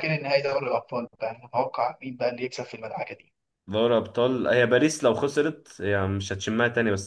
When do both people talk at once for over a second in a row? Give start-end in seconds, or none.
none